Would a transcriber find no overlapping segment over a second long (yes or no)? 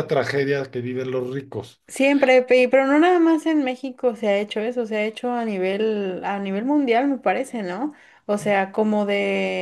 yes